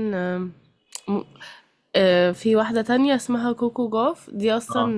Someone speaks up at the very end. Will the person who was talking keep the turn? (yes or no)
yes